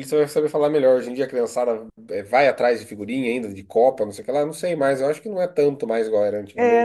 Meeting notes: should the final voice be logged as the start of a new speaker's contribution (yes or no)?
yes